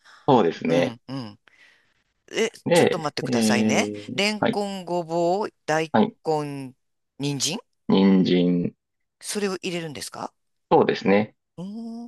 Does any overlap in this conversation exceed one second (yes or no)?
yes